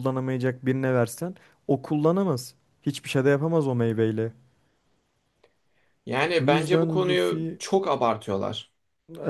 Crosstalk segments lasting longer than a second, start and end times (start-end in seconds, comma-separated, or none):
6.4-7.6